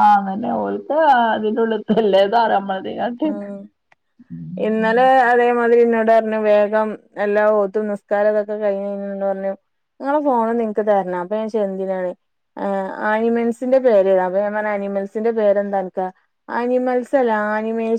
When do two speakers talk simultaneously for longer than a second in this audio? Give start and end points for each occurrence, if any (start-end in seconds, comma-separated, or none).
none